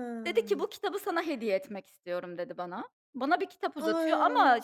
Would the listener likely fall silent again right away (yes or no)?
yes